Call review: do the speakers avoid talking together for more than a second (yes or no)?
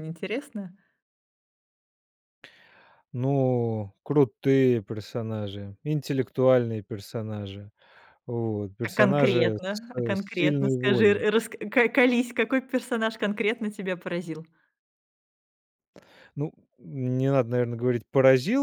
no